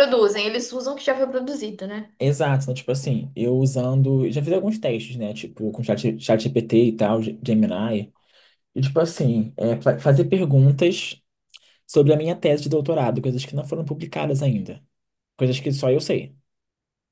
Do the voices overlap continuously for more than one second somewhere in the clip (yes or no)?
no